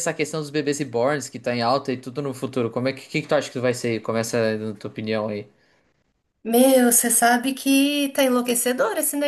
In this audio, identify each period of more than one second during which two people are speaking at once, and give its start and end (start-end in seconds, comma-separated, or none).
none